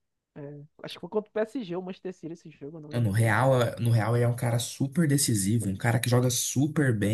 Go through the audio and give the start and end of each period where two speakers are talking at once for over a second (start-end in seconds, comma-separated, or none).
none